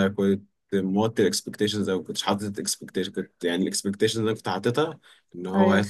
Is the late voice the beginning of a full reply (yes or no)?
no